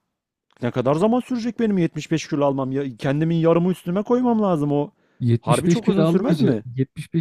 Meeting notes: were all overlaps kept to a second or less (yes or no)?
no